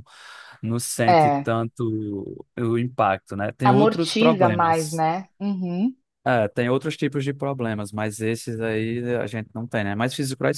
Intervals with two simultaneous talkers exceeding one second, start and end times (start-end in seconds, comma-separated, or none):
3.6-5.0